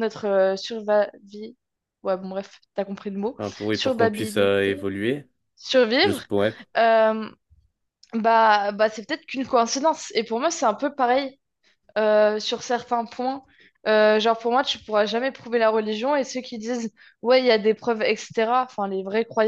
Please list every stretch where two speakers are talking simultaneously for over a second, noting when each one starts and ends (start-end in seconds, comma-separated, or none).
3.4-4.9